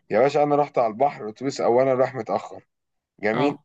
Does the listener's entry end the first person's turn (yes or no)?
no